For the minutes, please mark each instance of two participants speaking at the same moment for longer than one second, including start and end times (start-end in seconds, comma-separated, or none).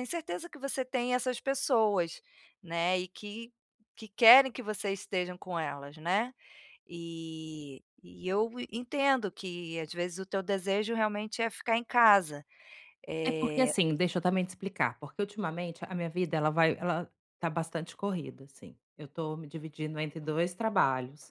none